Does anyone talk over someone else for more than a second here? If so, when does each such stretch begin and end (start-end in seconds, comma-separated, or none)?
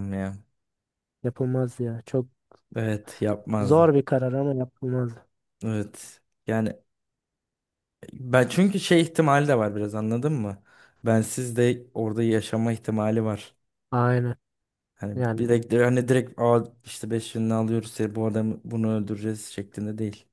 none